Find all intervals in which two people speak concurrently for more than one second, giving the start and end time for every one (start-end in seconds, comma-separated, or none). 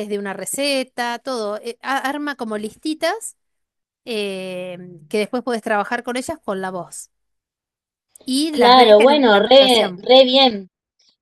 8.5-10.0